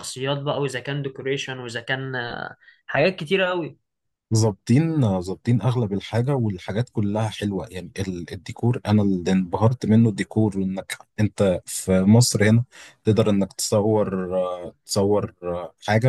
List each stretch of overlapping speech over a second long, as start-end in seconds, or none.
none